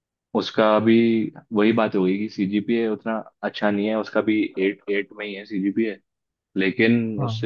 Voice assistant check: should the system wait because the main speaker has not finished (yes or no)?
yes